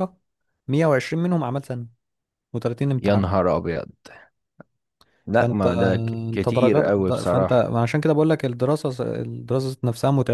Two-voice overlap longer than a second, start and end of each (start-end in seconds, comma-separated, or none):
5.3-7.7